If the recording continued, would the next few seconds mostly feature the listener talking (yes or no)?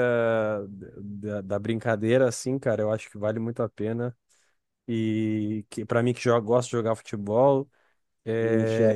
no